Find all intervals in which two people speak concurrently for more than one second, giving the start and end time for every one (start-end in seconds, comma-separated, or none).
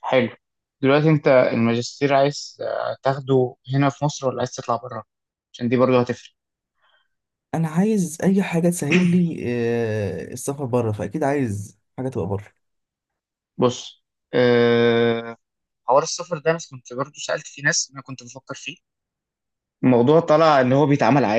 none